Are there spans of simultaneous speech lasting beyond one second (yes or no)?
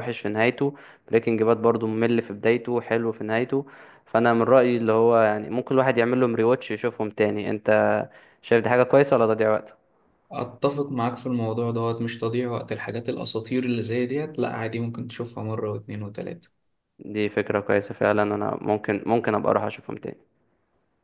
no